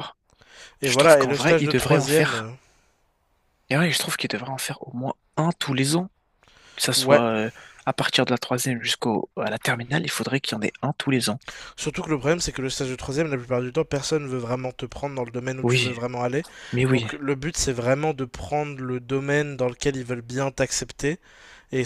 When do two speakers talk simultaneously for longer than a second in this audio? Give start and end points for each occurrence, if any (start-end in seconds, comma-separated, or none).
0.8-2.4